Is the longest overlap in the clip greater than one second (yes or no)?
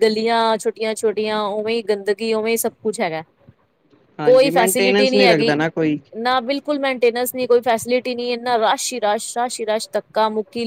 yes